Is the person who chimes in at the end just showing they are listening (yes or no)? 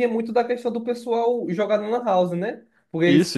yes